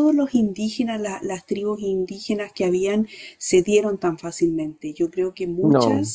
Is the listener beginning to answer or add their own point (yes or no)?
no